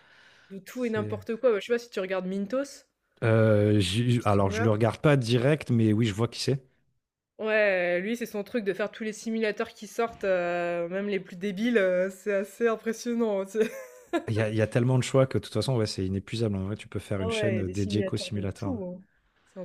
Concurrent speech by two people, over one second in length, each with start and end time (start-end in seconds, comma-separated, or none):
17.2-18.8